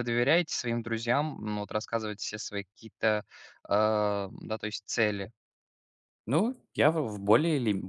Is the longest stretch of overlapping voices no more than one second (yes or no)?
yes